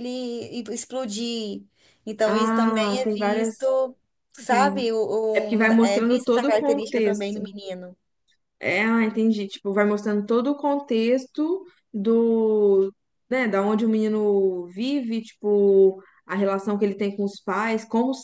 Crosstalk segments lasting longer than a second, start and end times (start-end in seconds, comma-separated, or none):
2.2-3.5, 5.6-7.4